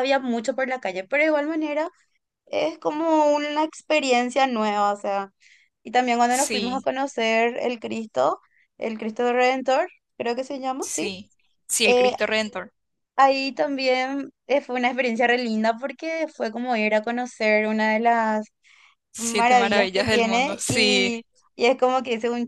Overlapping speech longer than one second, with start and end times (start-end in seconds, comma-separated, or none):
19.2-21.2